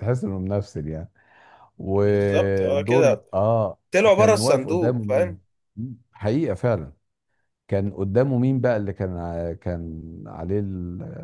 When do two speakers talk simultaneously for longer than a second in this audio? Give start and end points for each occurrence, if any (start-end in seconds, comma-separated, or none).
2.0-3.2, 4.1-5.4